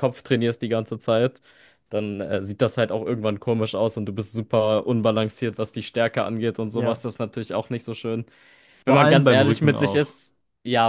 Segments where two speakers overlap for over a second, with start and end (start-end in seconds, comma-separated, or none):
8.9-10.2